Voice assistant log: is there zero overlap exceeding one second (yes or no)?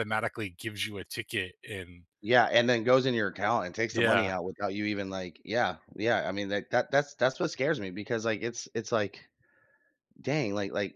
yes